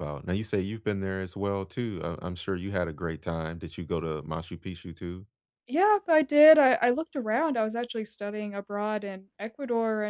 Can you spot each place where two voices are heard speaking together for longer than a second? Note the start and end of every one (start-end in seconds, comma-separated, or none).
none